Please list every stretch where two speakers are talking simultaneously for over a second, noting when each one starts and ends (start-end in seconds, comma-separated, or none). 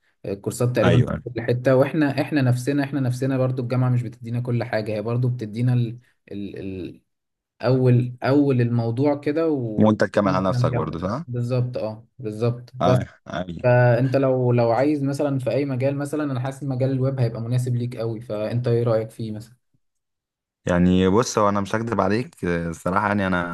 9.8-11.2